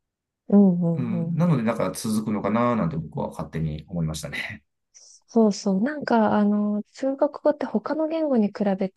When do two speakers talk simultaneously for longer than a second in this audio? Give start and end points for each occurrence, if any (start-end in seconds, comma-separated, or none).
none